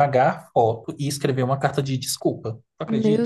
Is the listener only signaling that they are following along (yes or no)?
no